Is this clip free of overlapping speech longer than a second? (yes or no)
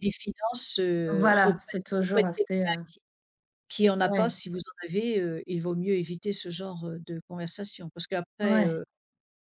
no